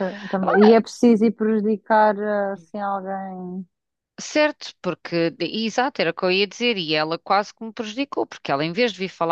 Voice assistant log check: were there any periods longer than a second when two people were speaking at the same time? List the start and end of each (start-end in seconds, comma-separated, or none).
none